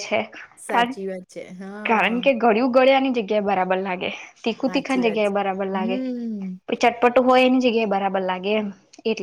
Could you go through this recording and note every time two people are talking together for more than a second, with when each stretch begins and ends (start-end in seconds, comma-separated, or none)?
4.6-6.0